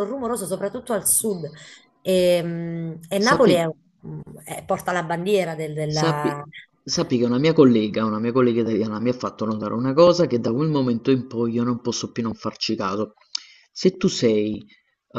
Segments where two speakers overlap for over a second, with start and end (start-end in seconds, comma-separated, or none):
none